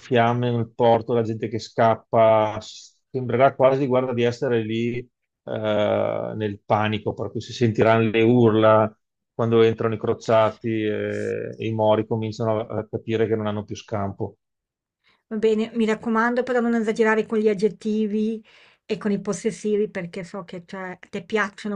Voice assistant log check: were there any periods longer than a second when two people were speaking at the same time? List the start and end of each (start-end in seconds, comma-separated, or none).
none